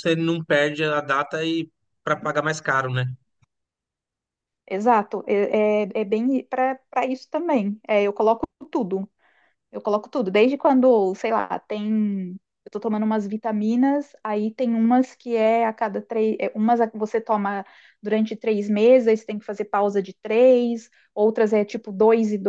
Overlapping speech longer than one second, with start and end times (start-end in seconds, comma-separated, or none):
none